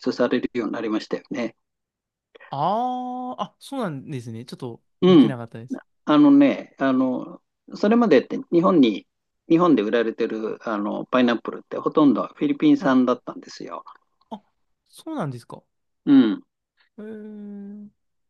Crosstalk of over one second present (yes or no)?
no